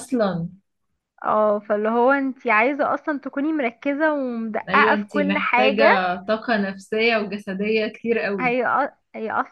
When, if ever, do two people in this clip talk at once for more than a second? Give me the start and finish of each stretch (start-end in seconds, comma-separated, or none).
4.7-6.0